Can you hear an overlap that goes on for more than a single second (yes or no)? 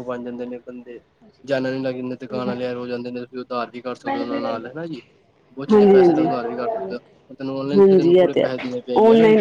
yes